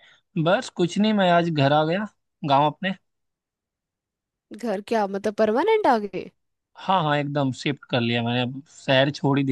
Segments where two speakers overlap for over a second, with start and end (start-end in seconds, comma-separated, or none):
none